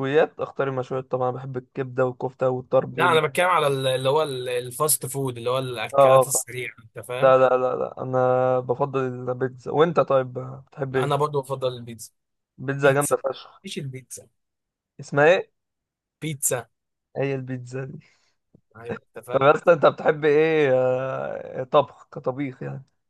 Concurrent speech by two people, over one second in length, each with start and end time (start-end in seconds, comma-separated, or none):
none